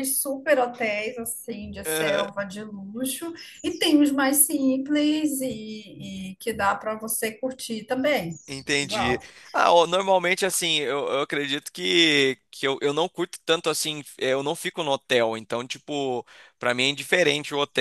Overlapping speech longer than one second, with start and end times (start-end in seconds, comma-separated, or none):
none